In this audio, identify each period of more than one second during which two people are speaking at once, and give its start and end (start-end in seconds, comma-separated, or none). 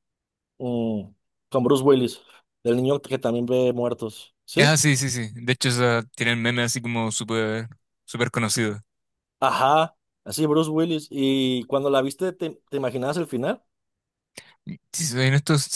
none